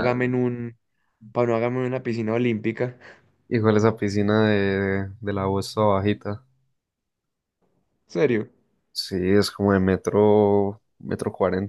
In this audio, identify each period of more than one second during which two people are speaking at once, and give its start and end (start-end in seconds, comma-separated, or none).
none